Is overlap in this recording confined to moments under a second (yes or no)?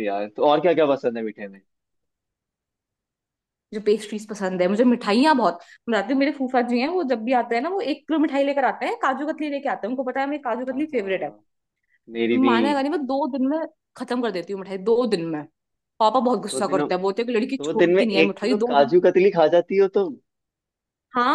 no